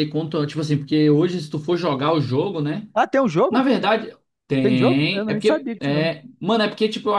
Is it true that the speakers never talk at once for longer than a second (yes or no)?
no